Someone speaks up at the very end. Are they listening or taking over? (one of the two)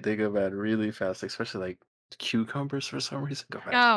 taking over